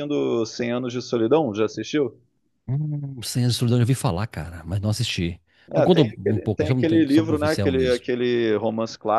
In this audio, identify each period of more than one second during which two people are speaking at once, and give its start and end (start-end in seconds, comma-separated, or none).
5.7-8.1